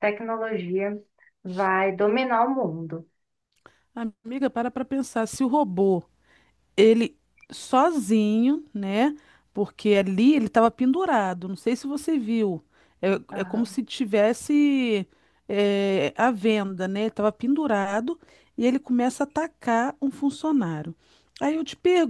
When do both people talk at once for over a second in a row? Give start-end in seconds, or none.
none